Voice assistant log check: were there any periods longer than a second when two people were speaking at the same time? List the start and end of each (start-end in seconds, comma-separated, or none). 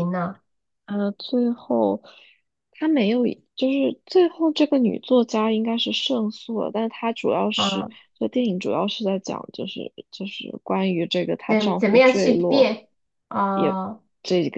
11.5-12.7